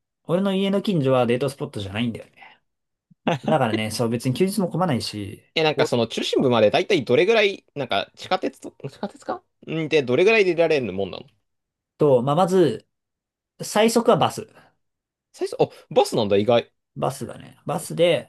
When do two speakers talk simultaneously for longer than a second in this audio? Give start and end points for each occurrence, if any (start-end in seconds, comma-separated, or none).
none